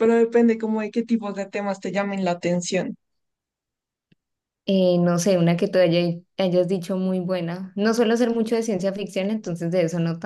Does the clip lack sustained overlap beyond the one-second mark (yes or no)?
yes